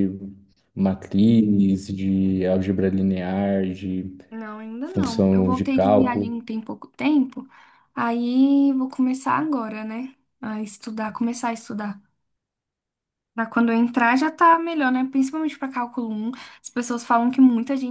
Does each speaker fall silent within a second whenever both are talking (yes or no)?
no